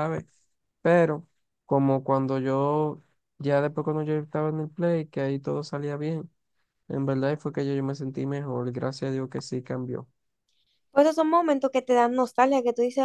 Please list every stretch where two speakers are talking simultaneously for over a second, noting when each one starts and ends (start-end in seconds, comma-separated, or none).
none